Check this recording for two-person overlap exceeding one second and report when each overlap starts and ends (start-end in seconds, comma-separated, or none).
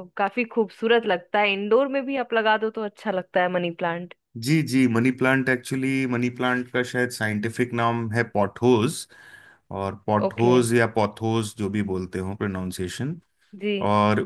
none